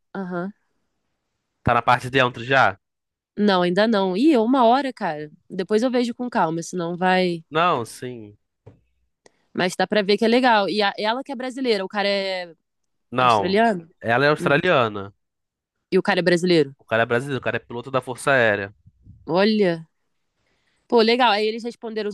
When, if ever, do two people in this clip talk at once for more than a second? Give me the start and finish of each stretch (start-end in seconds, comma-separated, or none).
none